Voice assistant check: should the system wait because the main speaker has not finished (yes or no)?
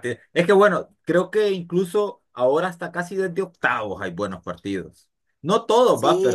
yes